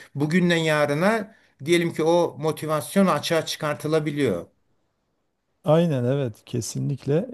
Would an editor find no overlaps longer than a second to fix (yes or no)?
yes